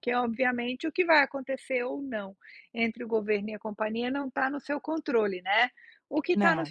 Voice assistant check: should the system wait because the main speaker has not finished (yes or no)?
yes